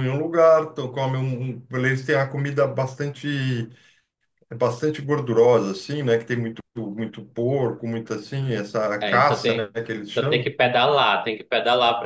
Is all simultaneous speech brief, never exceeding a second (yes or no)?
no